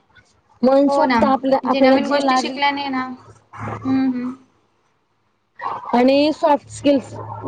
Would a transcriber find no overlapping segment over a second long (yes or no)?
no